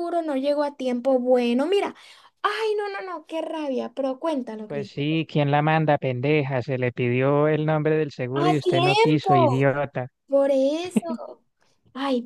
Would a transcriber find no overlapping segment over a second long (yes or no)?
no